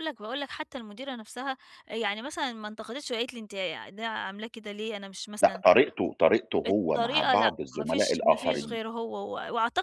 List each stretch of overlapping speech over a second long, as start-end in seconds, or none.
6.7-8.8